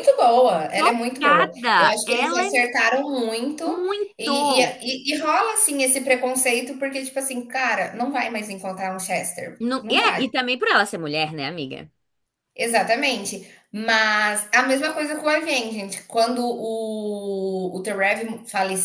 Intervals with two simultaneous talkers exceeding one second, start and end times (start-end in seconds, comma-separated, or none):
0.8-2.5